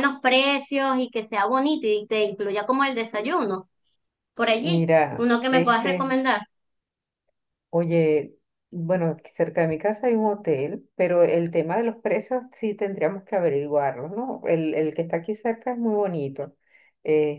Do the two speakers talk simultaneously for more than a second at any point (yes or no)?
yes